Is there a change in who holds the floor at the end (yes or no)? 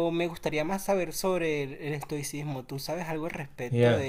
yes